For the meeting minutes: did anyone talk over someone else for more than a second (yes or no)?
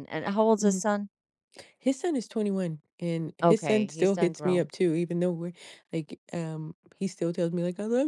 yes